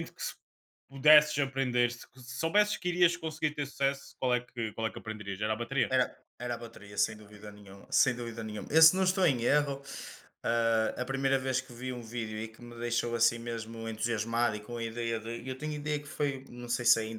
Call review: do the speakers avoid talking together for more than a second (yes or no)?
yes